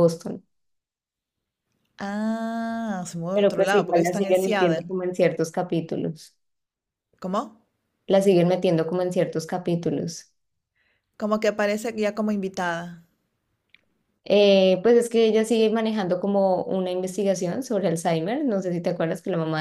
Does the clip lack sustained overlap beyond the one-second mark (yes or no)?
no